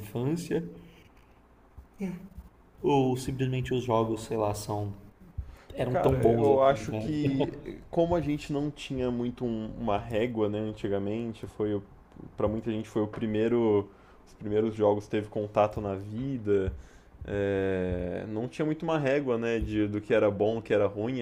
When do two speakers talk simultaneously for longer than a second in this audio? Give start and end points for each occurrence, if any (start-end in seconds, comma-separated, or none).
5.9-7.2